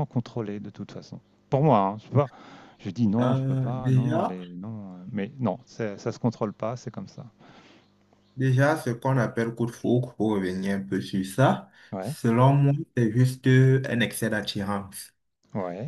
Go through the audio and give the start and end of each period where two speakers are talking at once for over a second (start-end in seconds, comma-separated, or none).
3.2-4.4